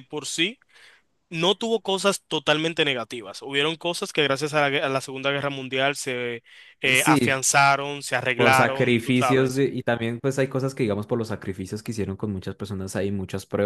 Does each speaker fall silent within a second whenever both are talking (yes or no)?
no